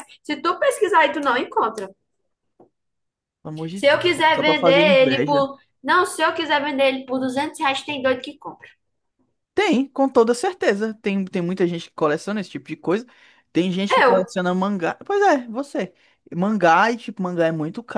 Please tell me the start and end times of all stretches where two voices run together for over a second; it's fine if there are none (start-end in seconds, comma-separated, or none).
3.7-5.5